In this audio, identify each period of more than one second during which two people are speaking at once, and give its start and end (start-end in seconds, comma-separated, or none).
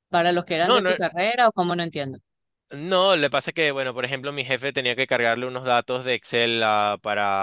none